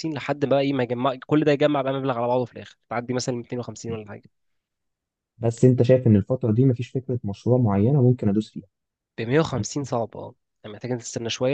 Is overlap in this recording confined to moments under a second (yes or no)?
yes